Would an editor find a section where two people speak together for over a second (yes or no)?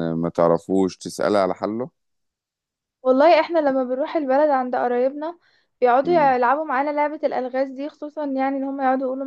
no